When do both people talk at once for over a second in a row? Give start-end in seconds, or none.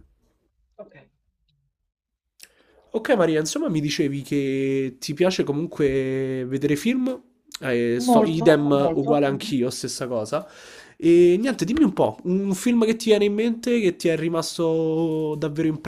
8.1-9.5